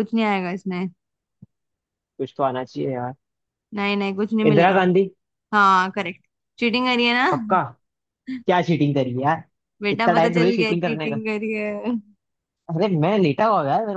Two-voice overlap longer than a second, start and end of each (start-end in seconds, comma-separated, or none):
9.9-11.2